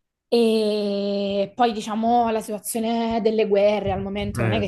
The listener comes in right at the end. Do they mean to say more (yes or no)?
no